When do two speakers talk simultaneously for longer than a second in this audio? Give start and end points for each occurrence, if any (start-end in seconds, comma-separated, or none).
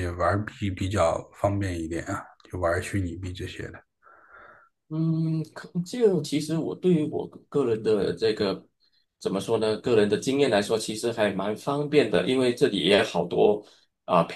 none